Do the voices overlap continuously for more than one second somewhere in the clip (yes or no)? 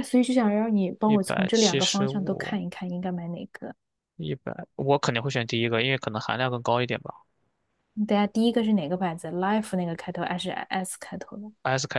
yes